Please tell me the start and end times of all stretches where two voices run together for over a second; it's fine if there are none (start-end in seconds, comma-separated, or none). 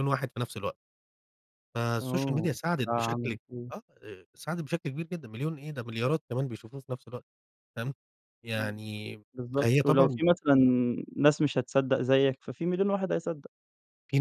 2.0-3.4